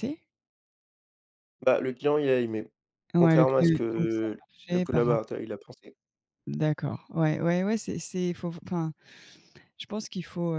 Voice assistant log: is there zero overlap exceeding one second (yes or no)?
no